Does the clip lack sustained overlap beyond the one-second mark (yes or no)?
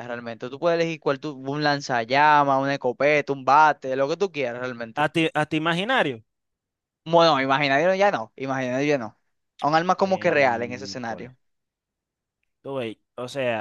no